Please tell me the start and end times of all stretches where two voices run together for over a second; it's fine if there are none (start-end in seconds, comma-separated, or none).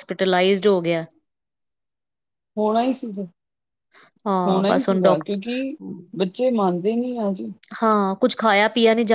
4.5-5.8